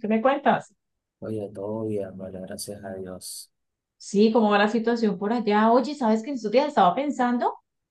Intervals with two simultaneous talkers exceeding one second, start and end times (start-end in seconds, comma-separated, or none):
none